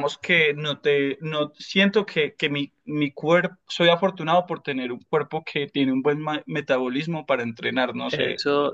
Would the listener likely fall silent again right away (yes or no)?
no